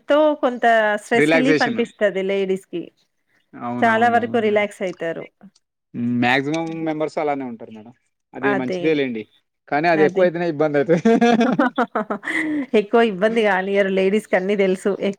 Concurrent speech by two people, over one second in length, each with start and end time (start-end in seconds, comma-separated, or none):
3.8-5.2